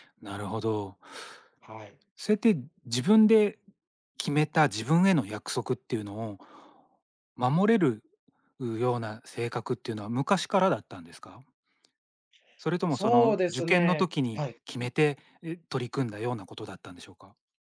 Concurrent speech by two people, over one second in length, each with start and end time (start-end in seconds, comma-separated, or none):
12.9-14.6